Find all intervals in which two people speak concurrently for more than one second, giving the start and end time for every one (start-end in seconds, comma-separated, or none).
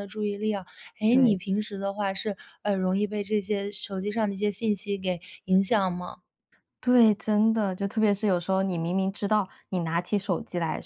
none